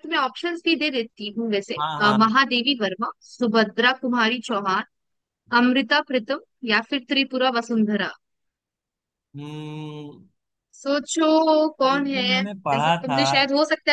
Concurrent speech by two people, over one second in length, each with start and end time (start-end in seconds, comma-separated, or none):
11.9-13.2